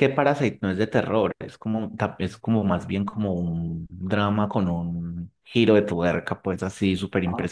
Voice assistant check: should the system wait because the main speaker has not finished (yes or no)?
yes